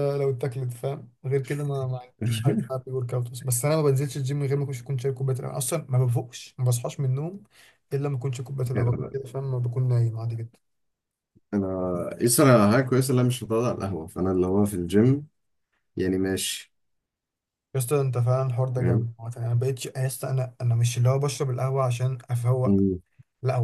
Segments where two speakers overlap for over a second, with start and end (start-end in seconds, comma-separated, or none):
none